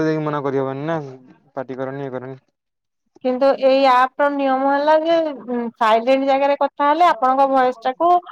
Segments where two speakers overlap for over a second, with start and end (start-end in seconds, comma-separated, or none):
none